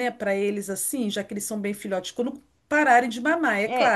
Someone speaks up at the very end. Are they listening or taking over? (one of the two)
taking over